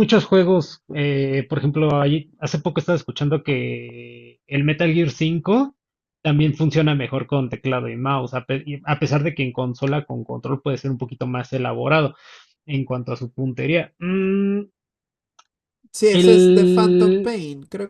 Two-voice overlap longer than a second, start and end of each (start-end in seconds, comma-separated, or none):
16.1-17.4